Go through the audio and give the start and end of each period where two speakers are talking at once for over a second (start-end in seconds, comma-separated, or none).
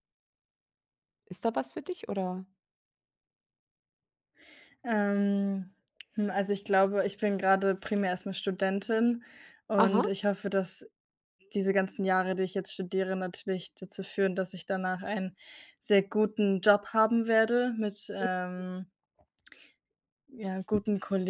none